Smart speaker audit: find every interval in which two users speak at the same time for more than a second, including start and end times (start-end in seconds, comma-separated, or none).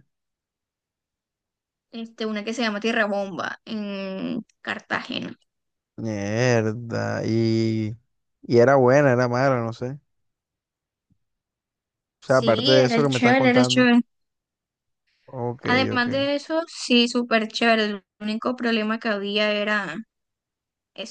12.2-13.9